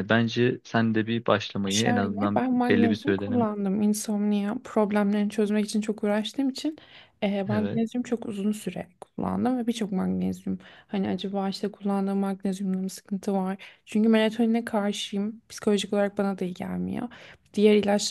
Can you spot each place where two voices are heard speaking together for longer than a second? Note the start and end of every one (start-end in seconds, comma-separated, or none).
1.7-3.3